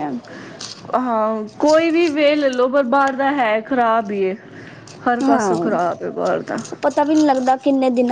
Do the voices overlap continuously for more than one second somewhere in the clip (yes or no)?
no